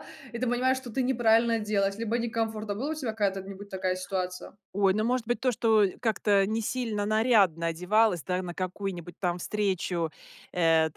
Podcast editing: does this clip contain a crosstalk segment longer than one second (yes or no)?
no